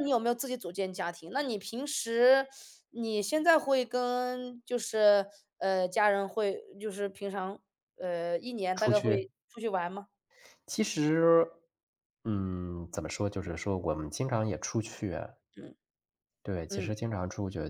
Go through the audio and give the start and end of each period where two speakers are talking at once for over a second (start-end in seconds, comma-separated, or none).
none